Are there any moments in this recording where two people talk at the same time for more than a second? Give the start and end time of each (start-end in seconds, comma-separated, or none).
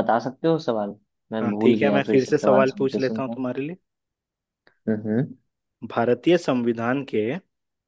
1.4-3.4